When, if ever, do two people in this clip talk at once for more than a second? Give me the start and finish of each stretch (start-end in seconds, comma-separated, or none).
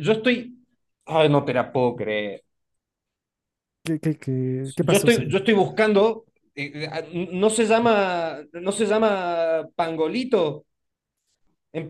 none